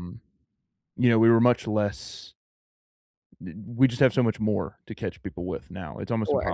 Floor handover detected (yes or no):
no